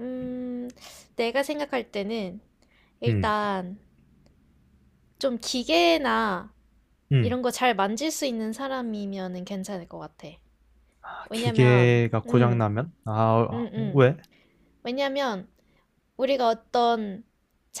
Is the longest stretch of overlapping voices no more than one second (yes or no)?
no